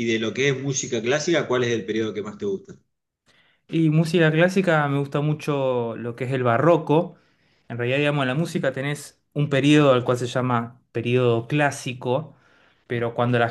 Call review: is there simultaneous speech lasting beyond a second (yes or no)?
no